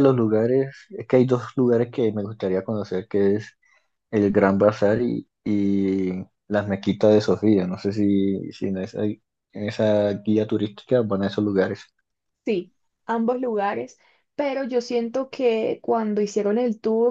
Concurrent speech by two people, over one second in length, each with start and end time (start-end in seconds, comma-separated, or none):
none